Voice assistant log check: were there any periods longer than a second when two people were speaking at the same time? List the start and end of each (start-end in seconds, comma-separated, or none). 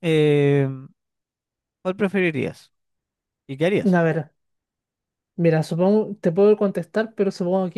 none